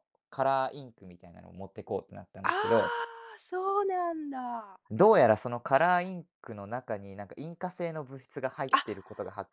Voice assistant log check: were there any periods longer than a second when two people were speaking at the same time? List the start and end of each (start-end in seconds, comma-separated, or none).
none